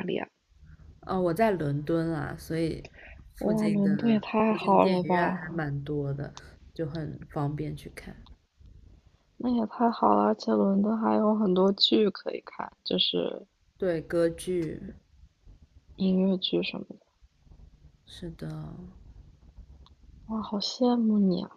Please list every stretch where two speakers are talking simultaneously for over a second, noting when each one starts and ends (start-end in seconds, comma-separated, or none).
3.4-5.4